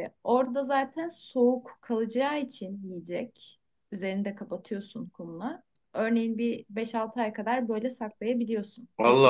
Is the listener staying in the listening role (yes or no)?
yes